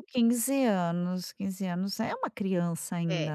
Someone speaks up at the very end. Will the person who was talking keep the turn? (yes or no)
no